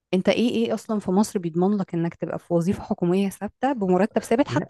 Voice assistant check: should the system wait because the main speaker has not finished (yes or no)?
yes